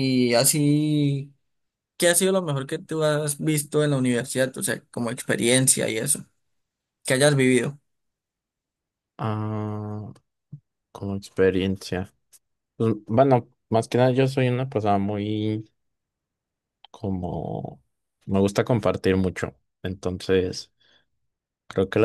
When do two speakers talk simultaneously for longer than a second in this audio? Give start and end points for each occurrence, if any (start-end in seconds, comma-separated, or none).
none